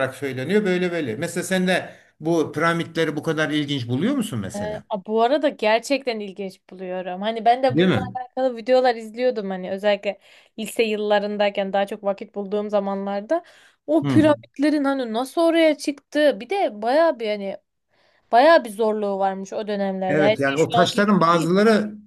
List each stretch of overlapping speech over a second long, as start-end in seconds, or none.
20.1-21.5